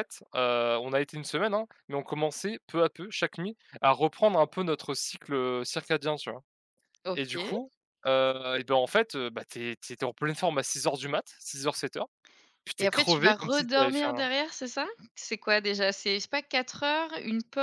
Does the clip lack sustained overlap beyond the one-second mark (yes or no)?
no